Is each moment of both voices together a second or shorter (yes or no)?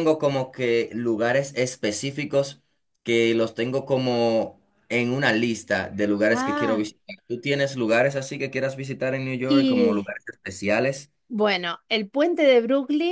yes